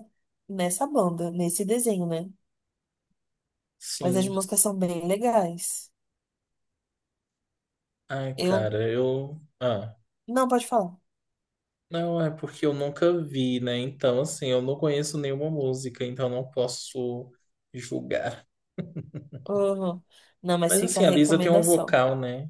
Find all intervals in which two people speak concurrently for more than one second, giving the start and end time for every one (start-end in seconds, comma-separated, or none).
20.6-22.0